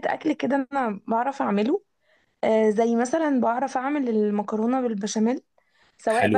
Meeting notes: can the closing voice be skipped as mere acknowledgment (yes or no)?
yes